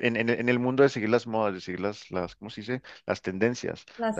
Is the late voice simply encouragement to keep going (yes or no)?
yes